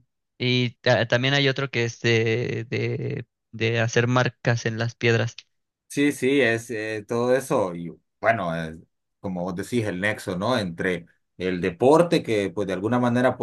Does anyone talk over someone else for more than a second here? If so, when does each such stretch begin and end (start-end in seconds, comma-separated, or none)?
none